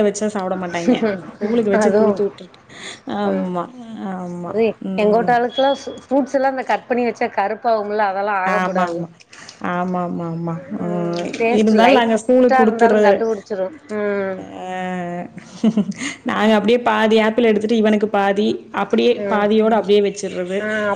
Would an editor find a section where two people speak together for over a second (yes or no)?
yes